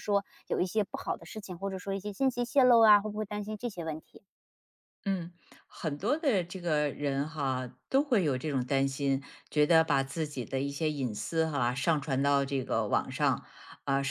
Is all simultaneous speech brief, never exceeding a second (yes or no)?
yes